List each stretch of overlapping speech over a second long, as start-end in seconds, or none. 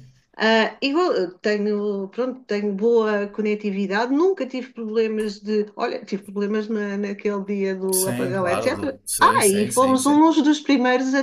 7.9-10.2